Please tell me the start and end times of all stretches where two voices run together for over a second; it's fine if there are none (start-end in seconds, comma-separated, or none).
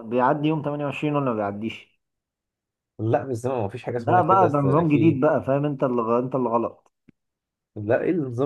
4.0-5.3